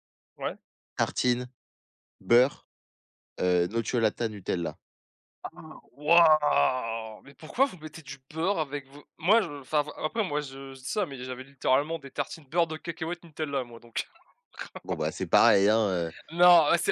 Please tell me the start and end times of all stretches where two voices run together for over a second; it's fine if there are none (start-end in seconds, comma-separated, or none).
none